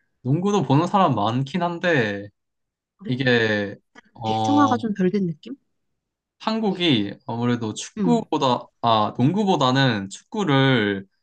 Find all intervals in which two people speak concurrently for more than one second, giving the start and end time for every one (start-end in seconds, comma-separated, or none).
none